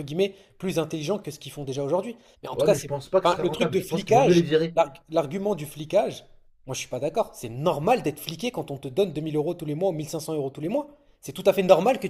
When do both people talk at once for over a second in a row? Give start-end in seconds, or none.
2.5-4.8